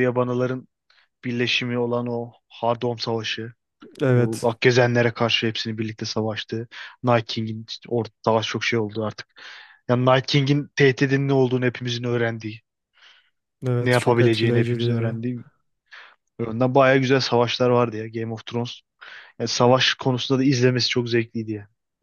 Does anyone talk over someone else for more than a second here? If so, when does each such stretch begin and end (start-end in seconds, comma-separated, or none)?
13.8-15.2